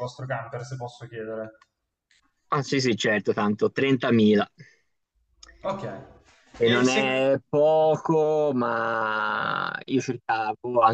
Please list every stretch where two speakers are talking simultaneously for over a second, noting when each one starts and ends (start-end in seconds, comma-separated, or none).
none